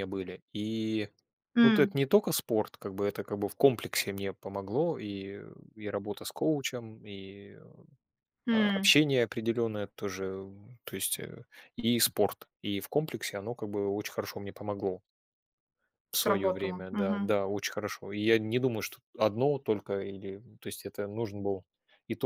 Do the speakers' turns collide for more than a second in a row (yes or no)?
yes